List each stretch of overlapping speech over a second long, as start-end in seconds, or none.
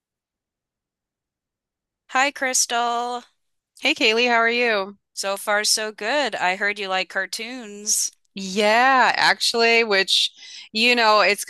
none